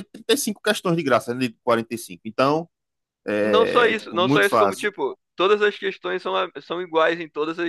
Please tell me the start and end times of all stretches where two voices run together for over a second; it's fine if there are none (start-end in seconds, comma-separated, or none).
3.4-4.9